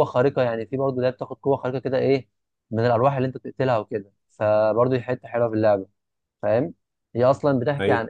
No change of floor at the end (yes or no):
yes